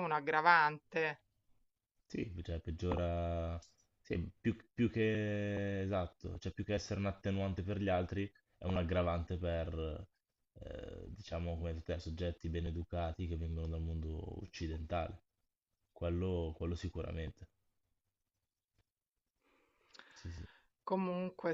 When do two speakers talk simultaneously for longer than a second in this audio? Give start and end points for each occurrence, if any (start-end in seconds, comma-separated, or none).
none